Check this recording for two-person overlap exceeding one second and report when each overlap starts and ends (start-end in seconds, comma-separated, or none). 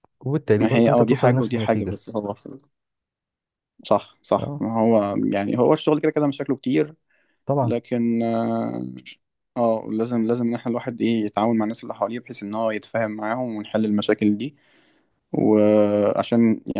0.6-2.0